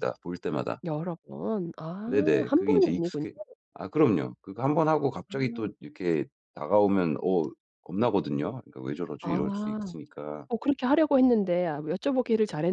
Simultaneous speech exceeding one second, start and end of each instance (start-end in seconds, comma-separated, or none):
2.0-3.2